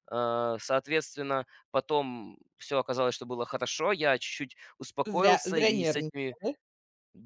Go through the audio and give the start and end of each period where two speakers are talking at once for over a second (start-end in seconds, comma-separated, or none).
5.0-6.4